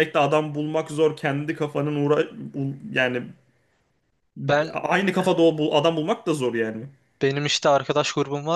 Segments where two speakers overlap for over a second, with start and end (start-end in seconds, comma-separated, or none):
none